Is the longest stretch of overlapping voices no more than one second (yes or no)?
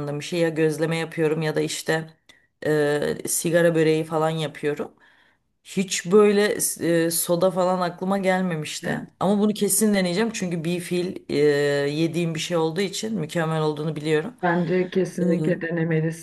yes